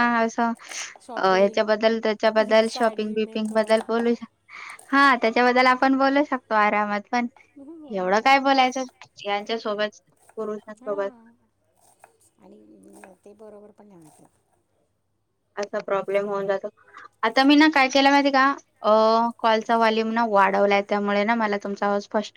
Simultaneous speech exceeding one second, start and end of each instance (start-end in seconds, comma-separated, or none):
2.7-4.0